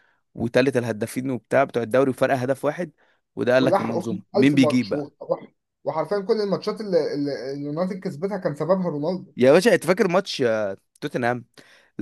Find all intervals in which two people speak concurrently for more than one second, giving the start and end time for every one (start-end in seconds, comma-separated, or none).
3.6-5.1